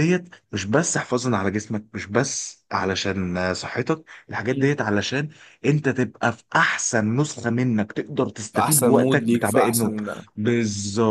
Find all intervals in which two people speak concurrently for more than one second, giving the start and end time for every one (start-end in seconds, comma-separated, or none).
8.5-9.9